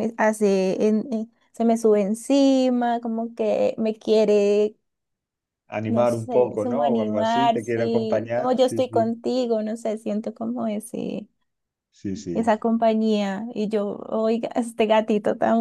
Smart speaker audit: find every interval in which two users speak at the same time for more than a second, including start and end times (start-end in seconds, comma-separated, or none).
5.9-9.1